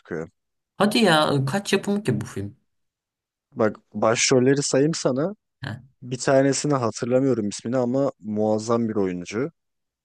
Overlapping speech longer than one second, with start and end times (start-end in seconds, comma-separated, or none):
none